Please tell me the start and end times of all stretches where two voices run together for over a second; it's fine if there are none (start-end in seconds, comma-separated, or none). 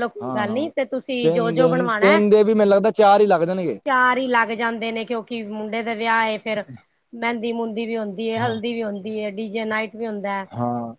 none